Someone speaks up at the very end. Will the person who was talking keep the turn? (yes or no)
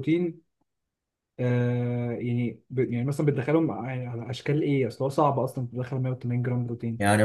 no